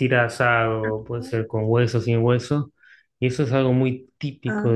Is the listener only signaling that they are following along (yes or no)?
yes